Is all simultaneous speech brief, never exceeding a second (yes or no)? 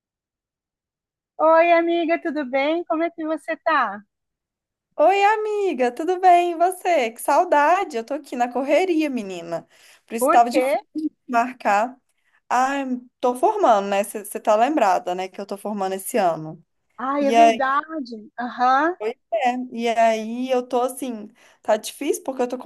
yes